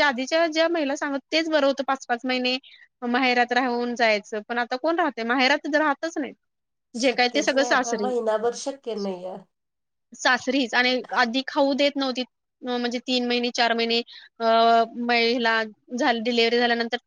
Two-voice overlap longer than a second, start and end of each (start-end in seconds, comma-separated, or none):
none